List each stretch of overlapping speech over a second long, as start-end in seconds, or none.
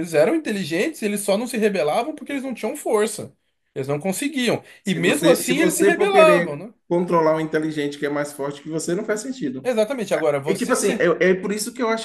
4.8-6.7